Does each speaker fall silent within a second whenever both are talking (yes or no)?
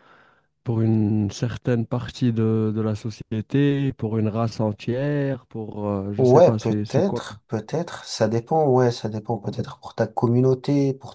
no